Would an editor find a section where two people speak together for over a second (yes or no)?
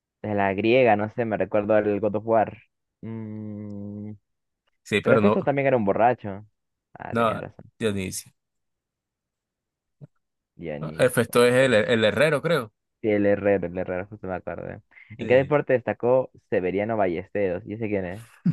no